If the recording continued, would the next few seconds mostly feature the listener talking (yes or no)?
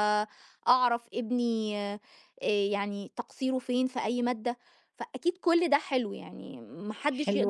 yes